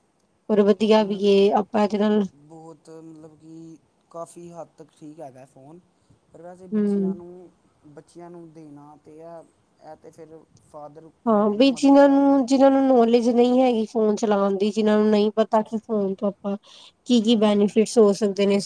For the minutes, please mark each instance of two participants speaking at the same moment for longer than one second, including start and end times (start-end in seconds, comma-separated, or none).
11.3-12.9